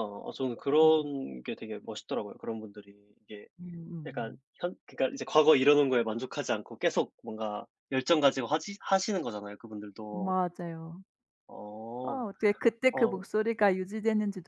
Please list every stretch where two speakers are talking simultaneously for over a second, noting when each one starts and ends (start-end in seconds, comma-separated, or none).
none